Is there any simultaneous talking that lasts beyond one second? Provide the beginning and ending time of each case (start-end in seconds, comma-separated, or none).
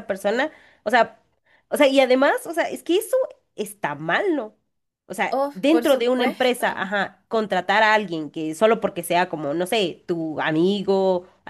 5.3-6.9